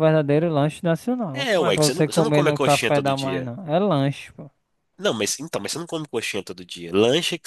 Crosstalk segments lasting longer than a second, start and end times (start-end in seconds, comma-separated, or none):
1.3-3.5